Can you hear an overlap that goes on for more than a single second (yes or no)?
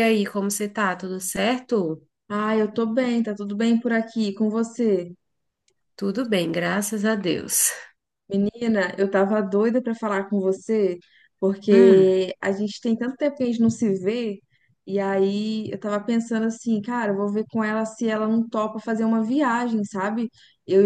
no